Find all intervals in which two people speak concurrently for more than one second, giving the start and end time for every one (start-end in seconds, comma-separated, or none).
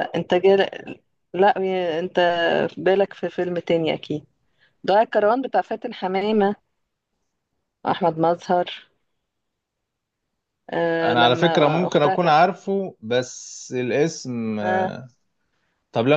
11.0-12.4